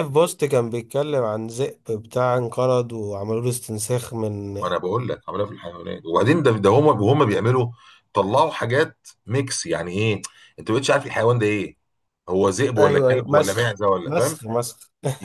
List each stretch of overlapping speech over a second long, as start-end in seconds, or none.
12.8-14.4